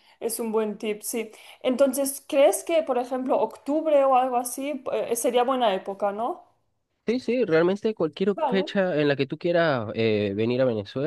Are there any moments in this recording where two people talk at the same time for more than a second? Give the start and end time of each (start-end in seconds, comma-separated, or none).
none